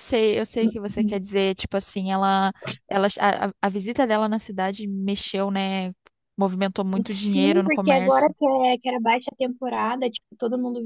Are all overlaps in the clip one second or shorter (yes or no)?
no